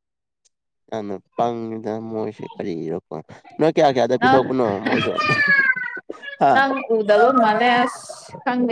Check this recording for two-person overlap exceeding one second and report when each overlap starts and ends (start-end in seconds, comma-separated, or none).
none